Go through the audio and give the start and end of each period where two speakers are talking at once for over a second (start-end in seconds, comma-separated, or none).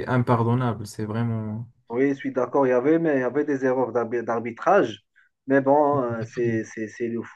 none